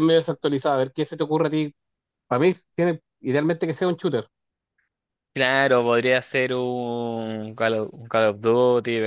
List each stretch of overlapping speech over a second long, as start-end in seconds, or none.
none